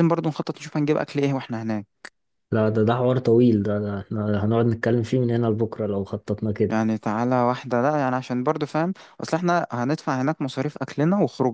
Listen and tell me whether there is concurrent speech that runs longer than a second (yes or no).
no